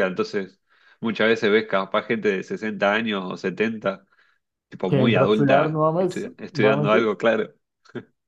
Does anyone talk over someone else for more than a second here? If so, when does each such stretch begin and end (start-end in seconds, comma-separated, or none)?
4.9-7.1